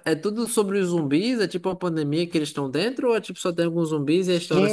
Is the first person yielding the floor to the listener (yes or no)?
yes